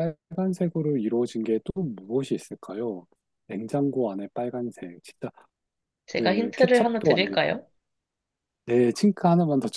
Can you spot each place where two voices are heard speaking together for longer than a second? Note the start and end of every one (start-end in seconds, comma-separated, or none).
6.1-7.4